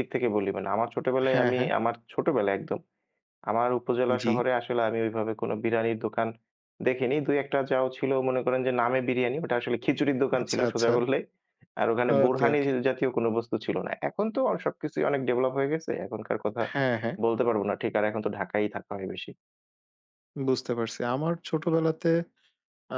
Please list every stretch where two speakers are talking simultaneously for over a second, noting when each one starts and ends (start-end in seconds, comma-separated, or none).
none